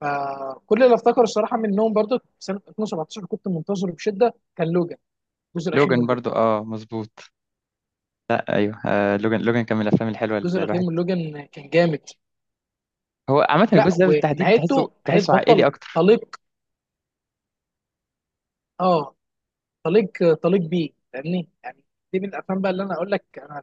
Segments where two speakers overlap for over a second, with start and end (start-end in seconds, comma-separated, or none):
13.7-16.0